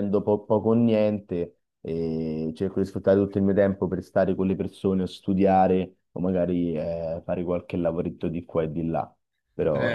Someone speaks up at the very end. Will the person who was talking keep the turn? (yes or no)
no